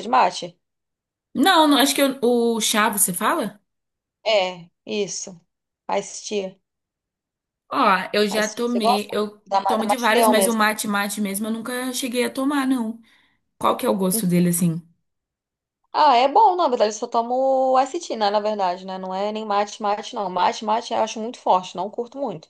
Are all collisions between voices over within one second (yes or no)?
no